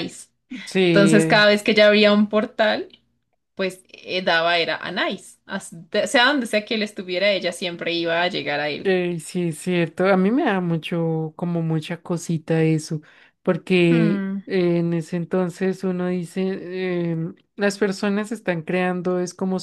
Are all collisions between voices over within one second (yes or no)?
yes